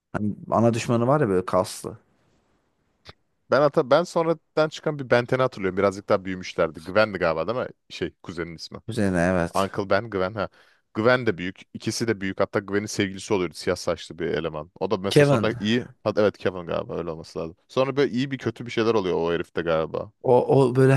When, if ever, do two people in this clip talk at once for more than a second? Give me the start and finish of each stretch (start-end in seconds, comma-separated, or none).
none